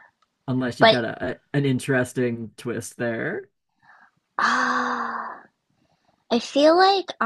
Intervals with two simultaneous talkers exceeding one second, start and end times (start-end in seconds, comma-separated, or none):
none